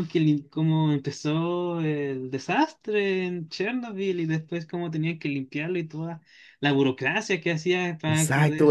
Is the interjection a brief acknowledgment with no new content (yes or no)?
no